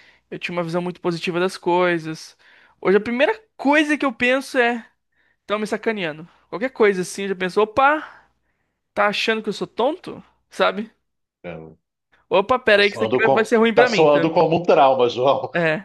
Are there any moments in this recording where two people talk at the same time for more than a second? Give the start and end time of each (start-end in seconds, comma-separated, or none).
12.7-14.3